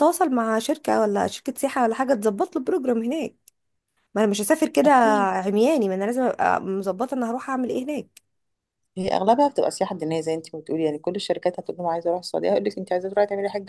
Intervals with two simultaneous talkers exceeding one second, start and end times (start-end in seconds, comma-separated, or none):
none